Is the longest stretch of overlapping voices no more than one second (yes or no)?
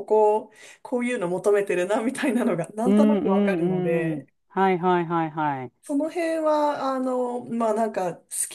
no